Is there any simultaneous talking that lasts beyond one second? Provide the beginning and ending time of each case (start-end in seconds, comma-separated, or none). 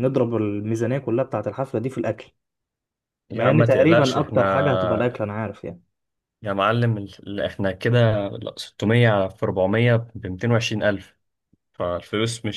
3.3-5.1